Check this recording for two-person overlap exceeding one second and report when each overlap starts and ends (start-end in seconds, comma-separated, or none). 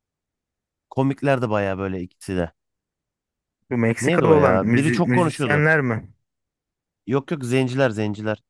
4.0-5.7